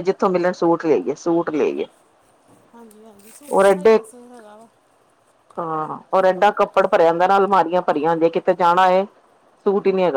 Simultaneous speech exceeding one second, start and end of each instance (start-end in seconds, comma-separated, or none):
none